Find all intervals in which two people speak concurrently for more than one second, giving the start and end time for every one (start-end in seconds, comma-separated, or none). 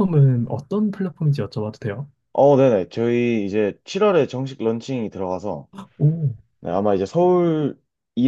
none